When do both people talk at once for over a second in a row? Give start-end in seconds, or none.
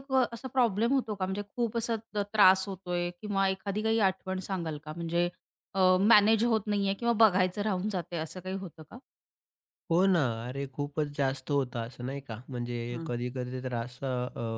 none